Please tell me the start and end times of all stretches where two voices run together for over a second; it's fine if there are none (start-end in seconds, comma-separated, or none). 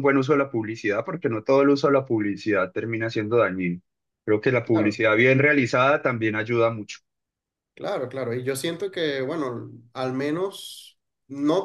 none